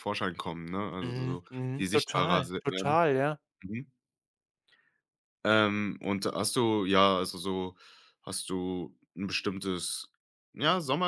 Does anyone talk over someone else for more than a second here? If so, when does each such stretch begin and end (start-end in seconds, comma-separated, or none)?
1.0-3.0